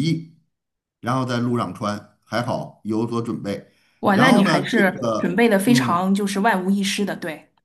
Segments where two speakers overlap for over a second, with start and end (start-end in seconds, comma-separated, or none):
4.1-6.0